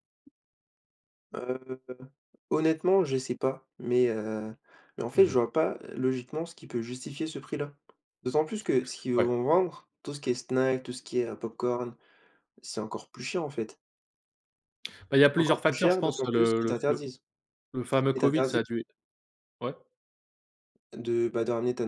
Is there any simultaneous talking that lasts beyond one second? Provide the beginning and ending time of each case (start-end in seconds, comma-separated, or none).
15.4-17.1